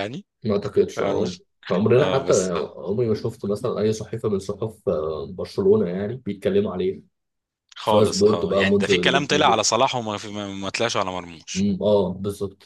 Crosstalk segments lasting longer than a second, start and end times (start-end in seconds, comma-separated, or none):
7.8-9.6